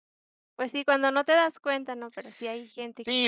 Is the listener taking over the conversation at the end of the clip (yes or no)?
yes